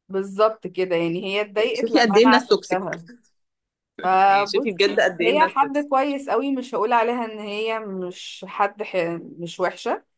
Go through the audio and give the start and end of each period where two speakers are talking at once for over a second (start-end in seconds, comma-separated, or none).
1.6-2.9, 4.2-5.9